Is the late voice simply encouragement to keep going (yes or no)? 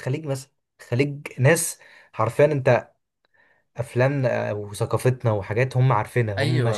no